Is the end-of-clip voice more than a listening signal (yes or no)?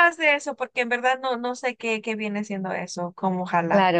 yes